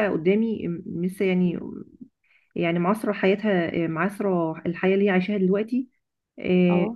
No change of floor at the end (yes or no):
yes